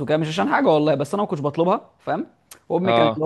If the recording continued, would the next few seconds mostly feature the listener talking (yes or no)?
no